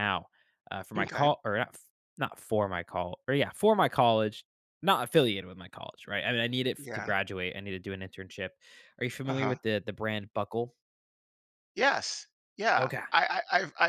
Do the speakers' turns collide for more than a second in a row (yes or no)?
no